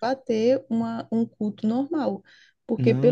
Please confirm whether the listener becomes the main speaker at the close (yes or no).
no